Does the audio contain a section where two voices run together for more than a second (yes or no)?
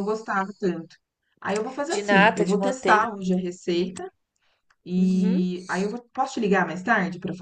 yes